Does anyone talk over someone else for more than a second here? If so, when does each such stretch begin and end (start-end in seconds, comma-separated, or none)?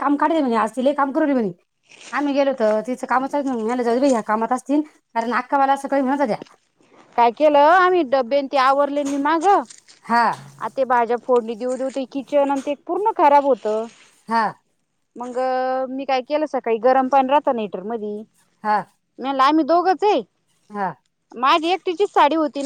none